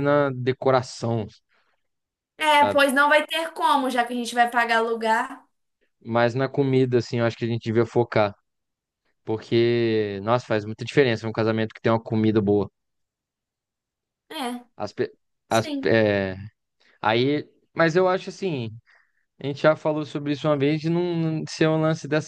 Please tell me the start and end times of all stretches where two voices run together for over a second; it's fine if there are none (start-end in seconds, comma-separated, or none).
none